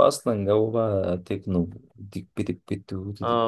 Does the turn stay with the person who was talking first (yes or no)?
no